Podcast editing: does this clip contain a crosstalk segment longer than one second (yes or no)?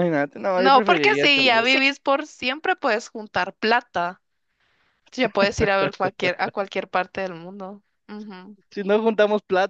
yes